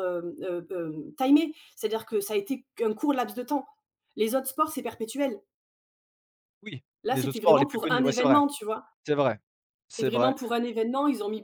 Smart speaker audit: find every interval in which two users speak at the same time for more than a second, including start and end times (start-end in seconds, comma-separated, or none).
7.0-8.4